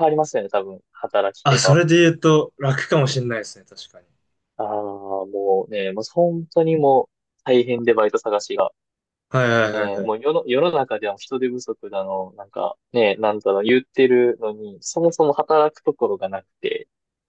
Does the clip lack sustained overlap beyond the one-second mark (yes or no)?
yes